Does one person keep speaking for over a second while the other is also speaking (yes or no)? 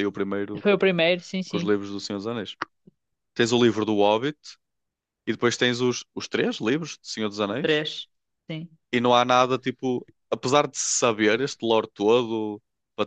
no